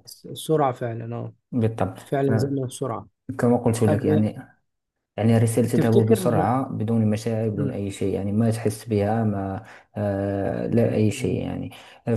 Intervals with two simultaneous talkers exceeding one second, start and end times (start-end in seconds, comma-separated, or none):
none